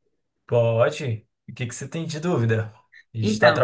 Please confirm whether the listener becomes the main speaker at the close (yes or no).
no